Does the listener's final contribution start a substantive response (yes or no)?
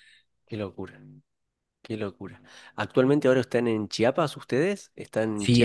yes